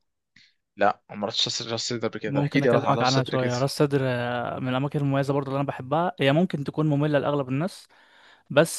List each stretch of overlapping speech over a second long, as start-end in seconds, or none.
2.2-3.5